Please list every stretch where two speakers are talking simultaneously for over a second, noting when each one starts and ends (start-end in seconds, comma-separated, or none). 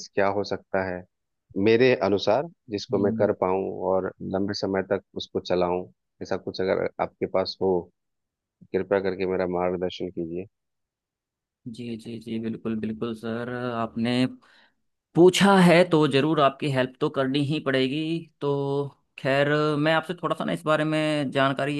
none